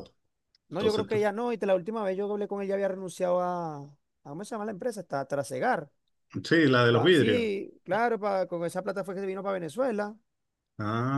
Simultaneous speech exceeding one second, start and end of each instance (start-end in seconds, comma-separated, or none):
none